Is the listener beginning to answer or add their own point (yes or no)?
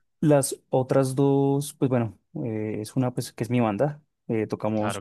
no